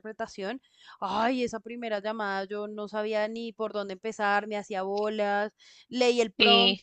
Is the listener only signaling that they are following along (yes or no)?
yes